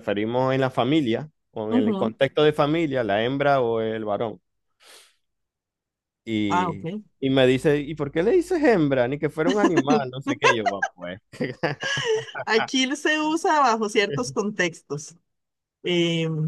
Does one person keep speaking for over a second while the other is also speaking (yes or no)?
no